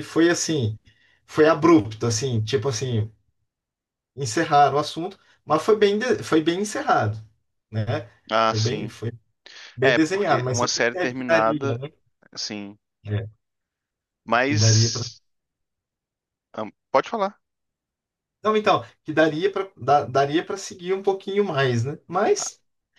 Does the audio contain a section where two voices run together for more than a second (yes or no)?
yes